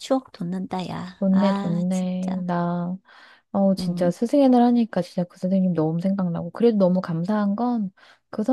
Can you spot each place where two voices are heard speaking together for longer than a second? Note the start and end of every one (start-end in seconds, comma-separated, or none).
1.2-2.4